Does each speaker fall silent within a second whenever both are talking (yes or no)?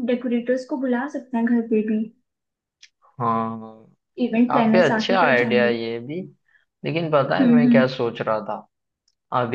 no